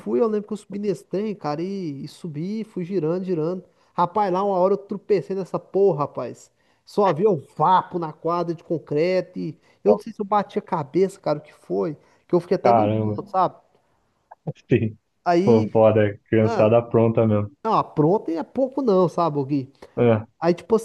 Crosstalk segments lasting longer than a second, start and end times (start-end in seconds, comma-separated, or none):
none